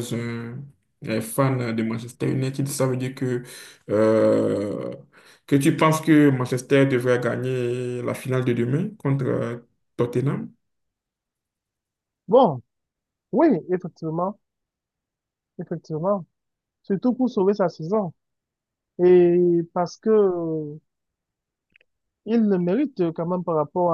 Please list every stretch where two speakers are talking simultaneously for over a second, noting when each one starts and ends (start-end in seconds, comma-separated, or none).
none